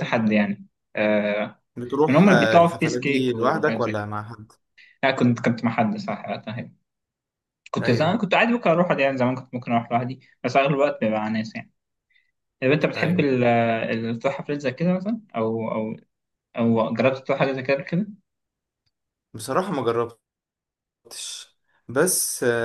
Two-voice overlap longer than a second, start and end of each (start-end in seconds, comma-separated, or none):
2.1-4.1